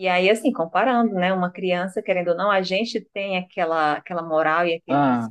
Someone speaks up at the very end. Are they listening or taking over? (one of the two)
listening